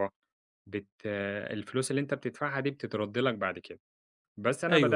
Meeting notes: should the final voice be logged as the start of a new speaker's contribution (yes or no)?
yes